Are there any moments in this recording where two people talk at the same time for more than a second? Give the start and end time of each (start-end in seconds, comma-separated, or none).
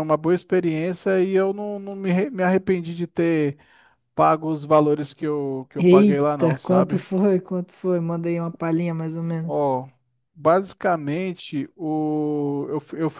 5.8-7.0